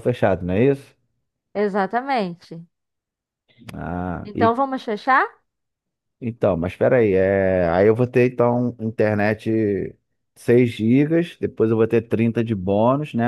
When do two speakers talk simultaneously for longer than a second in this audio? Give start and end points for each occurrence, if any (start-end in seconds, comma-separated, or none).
none